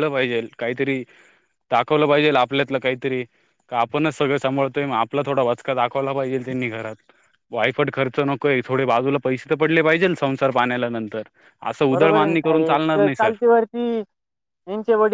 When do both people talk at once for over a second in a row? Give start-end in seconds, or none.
11.9-13.3